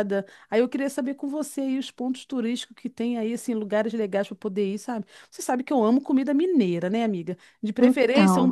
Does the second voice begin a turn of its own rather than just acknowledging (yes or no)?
no